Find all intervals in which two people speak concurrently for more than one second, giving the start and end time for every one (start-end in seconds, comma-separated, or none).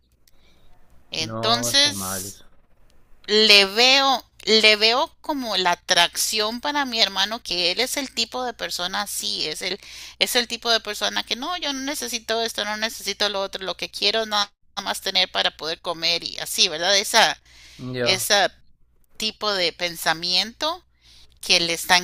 1.2-2.4